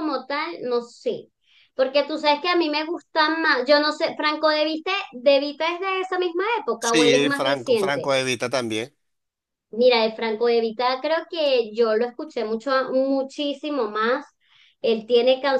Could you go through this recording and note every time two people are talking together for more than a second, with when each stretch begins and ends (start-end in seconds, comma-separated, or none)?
6.8-8.1